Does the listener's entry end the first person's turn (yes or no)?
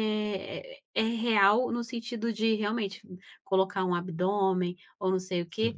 no